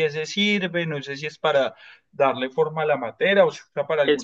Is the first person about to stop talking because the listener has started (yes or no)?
yes